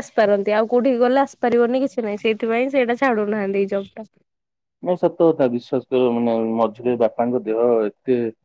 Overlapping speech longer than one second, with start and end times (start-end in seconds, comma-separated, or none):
none